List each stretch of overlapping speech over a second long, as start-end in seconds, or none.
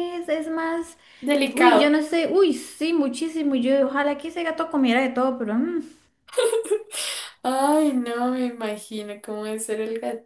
none